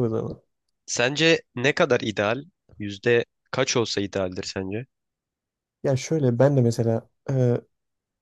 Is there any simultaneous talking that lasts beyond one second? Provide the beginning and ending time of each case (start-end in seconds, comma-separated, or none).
none